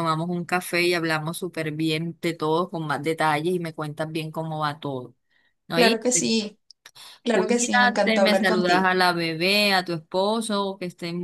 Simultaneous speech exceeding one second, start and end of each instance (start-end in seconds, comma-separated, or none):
7.3-8.9